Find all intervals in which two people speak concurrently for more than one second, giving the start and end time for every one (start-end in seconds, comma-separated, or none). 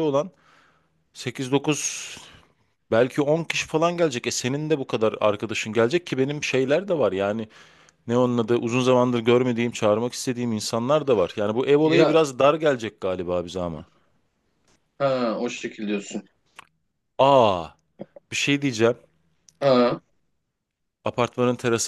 none